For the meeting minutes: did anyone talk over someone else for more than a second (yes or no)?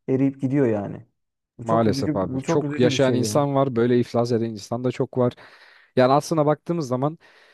yes